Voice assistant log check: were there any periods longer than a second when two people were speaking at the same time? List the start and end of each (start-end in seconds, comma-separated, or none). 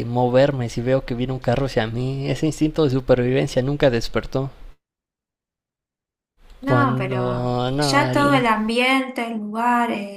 6.7-8.4